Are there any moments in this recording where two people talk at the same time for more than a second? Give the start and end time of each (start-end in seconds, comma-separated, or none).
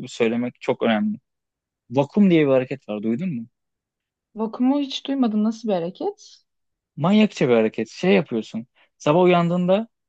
none